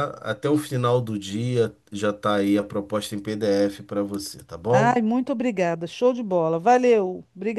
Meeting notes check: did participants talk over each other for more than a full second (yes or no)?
no